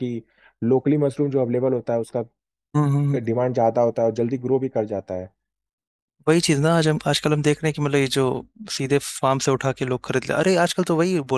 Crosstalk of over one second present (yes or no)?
no